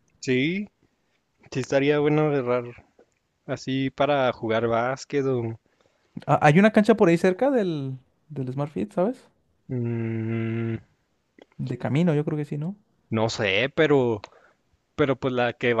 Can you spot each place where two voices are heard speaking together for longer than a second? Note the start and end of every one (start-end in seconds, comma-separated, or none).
none